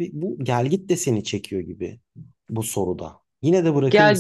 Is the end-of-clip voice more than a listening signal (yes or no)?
yes